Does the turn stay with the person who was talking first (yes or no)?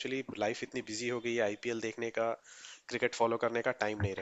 yes